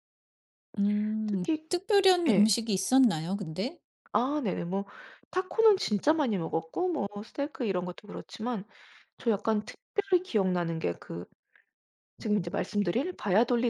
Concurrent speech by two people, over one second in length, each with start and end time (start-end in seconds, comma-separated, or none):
none